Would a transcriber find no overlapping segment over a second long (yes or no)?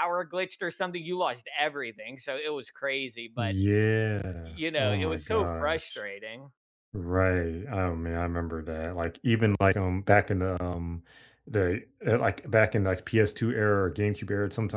no